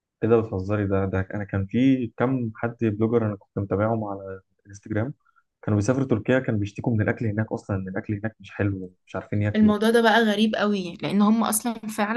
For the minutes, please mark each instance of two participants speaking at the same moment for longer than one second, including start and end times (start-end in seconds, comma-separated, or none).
none